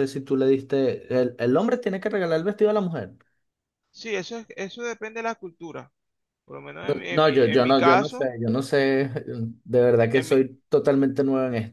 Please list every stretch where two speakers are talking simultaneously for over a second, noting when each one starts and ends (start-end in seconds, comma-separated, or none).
6.8-8.3